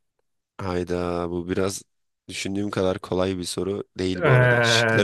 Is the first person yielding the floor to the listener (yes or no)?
yes